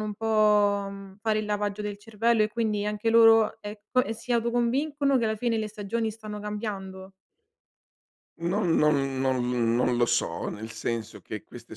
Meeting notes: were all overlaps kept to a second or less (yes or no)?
yes